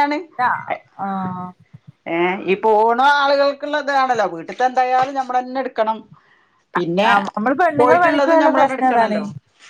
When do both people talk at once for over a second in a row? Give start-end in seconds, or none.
7.8-9.2